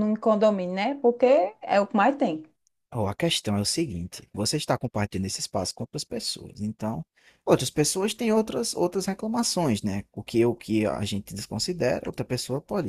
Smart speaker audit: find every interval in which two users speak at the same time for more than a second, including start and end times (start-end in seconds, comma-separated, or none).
none